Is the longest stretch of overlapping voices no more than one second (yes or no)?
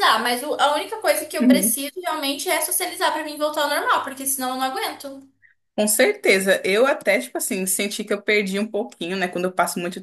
yes